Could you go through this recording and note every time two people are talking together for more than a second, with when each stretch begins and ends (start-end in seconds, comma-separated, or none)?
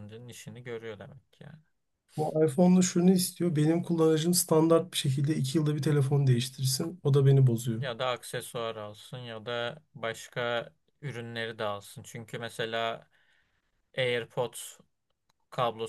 none